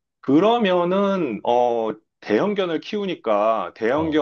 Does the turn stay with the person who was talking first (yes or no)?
yes